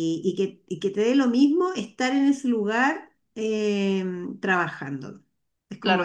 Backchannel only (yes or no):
no